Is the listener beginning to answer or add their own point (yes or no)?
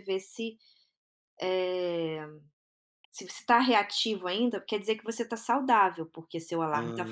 no